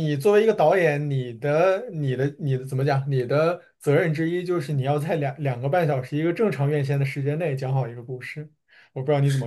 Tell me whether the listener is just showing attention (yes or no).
no